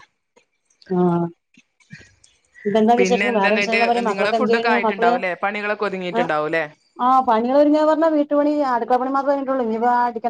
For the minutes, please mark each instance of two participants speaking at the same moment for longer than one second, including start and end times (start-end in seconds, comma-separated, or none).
3.0-5.1